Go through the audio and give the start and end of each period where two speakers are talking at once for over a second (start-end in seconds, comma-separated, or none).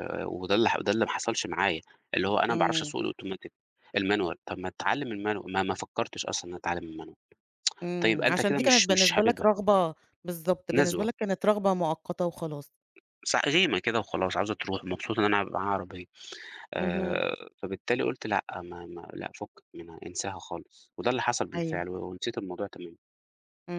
8.0-9.5